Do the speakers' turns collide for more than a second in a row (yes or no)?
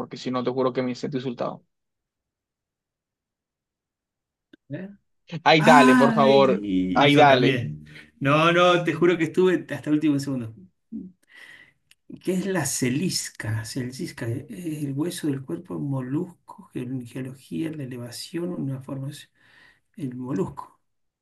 yes